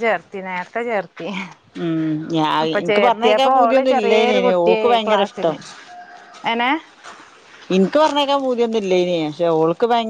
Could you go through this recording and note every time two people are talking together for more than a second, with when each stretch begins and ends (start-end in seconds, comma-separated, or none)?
2.9-5.5